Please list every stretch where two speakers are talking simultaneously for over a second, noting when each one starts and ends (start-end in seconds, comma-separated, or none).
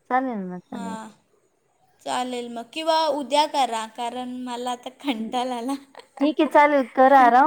none